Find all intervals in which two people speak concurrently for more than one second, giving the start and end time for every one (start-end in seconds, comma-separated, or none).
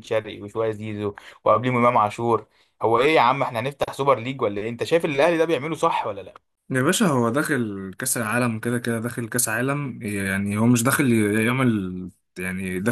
none